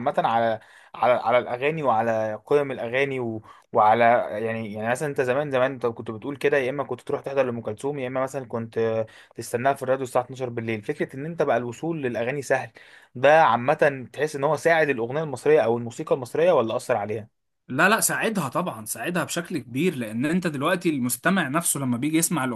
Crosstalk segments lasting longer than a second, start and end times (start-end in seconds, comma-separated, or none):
none